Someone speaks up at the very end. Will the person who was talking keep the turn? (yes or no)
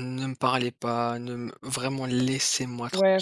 no